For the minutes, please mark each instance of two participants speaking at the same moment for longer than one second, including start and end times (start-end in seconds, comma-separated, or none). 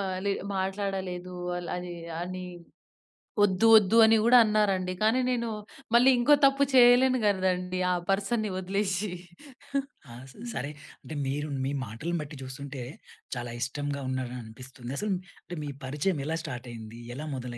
none